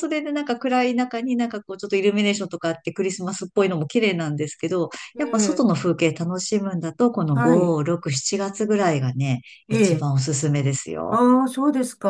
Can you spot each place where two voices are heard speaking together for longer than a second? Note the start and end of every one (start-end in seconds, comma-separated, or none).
none